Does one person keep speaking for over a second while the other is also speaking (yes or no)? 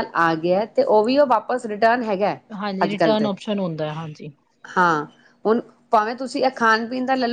no